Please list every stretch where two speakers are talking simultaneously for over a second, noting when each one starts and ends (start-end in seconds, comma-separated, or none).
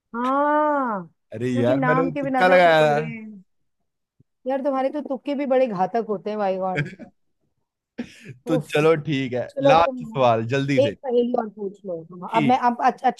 1.5-3.0